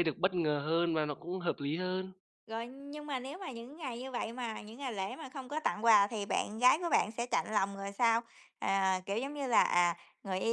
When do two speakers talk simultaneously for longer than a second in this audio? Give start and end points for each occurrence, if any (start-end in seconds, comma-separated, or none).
none